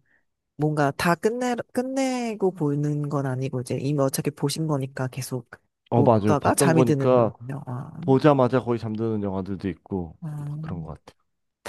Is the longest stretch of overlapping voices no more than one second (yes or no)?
no